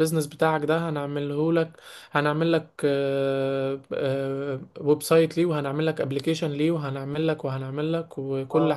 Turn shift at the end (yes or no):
no